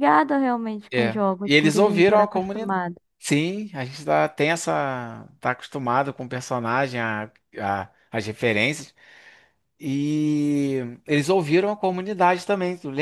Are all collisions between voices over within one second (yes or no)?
no